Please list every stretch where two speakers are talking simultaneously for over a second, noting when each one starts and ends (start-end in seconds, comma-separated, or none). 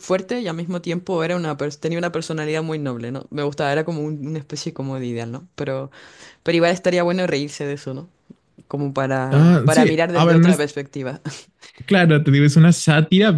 9.3-10.7